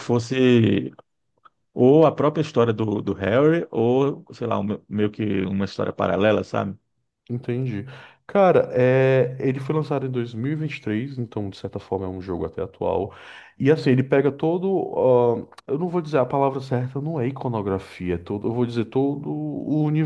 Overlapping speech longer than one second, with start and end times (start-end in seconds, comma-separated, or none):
none